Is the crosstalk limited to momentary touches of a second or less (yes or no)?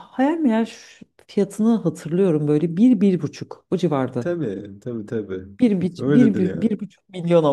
yes